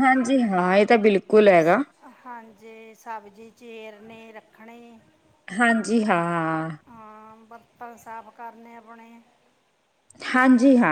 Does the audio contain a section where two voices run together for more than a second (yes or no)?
no